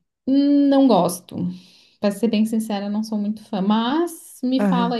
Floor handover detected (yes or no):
yes